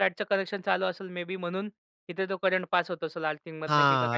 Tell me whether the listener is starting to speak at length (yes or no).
yes